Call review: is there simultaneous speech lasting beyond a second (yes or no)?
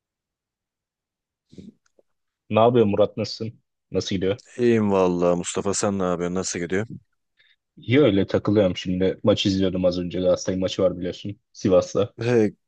no